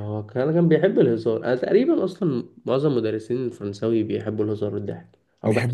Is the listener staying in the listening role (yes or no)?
no